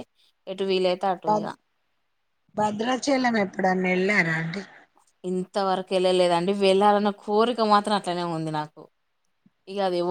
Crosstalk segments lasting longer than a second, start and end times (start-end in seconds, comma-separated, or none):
none